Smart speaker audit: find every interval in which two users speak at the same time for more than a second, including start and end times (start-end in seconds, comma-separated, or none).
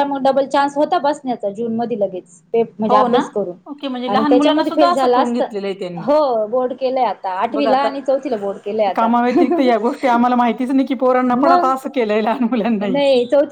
4.1-5.4